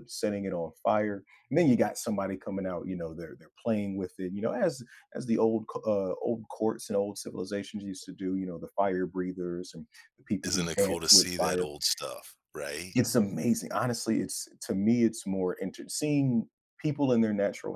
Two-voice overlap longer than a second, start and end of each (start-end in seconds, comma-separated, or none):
10.4-11.7